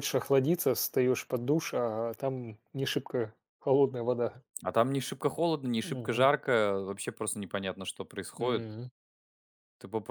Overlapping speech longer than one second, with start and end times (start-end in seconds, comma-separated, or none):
none